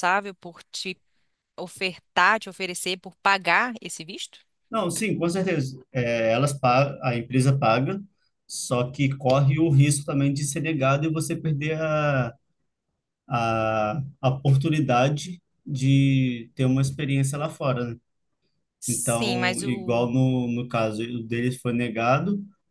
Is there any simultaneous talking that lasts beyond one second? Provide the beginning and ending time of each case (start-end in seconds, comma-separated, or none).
18.9-20.1